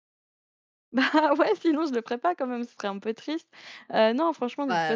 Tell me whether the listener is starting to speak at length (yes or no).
yes